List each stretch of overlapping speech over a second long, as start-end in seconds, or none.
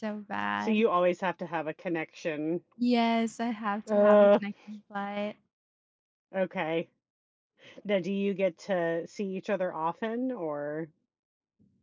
none